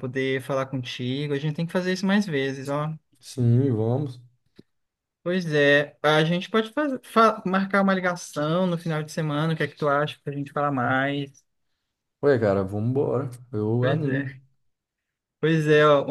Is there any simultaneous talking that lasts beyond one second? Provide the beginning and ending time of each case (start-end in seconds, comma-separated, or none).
none